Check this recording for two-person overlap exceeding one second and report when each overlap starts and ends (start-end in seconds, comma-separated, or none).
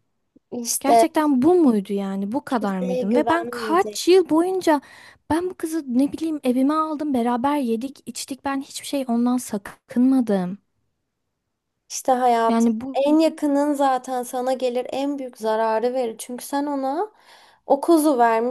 2.5-4.0